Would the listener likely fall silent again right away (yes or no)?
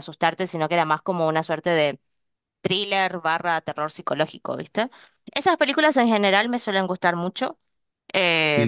no